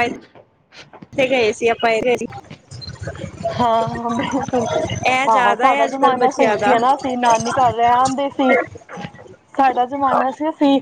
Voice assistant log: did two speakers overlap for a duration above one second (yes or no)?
yes